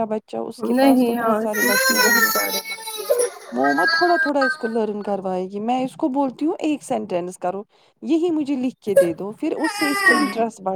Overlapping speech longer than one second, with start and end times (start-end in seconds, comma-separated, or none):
0.7-2.3